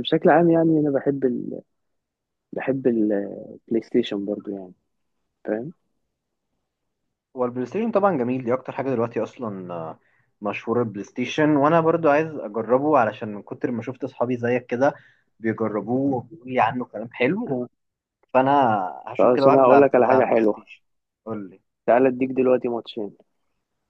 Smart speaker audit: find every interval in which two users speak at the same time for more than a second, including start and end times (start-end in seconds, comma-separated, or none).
19.2-20.7